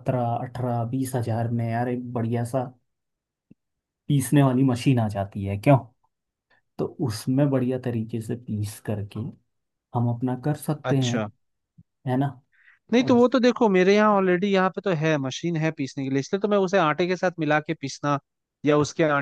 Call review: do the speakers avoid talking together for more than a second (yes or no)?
yes